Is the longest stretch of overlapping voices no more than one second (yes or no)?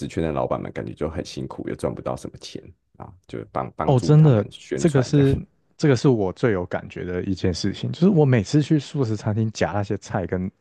no